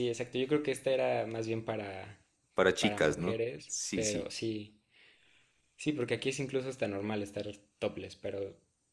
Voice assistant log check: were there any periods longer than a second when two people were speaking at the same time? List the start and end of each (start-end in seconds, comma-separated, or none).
2.8-4.3